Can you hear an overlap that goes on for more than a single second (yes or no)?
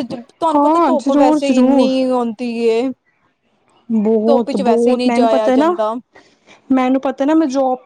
yes